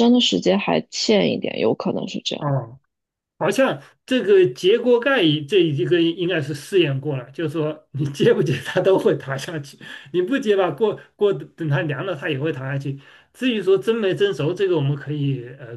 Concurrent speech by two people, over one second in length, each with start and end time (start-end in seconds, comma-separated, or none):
none